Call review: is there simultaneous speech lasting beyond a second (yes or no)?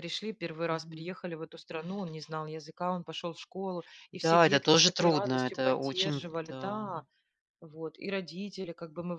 yes